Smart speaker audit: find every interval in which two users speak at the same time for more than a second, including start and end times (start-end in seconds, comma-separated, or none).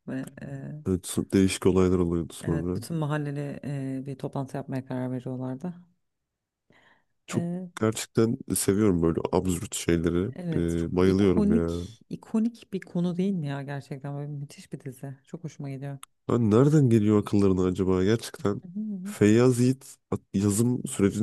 10.3-11.9